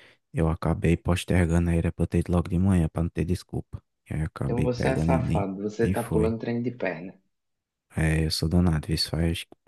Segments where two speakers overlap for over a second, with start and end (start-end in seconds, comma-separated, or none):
4.5-6.3